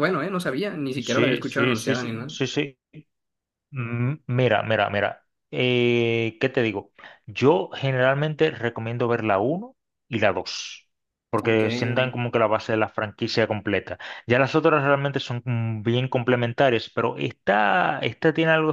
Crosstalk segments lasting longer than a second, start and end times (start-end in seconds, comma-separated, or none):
1.0-2.4